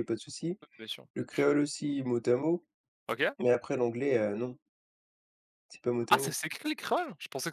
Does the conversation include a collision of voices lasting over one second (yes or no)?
no